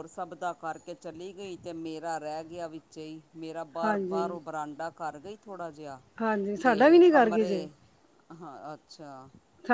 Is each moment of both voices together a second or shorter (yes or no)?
no